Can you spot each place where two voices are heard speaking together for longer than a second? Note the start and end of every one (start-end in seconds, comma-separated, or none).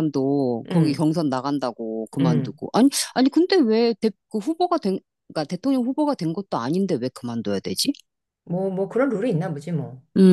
none